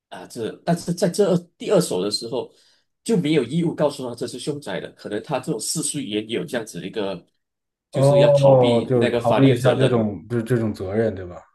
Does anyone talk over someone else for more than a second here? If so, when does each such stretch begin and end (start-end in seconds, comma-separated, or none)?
7.9-10.1